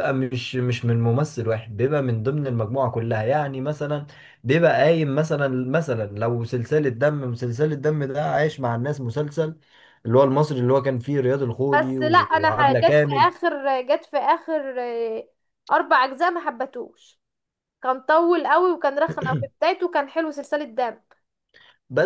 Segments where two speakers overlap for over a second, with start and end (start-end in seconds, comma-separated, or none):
11.7-13.3